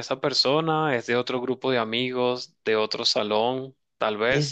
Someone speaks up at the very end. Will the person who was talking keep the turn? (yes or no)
yes